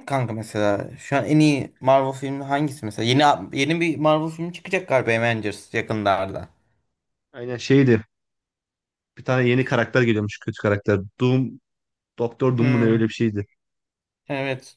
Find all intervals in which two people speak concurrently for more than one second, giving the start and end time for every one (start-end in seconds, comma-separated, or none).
none